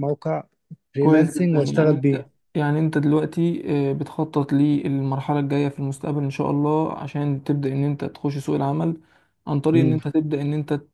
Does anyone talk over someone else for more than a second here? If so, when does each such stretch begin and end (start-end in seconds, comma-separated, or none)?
1.0-2.2